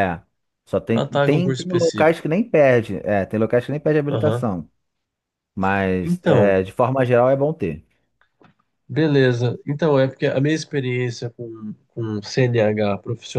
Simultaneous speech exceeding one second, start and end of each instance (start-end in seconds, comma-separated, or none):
0.9-2.2